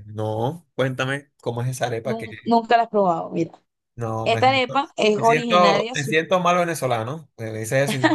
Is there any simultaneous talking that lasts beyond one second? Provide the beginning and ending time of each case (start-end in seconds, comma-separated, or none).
4.2-6.1